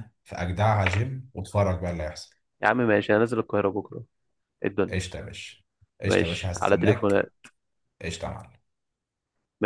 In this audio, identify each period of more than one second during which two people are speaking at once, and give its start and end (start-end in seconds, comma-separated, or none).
6.1-7.3